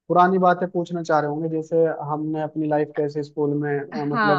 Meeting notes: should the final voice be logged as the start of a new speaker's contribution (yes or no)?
yes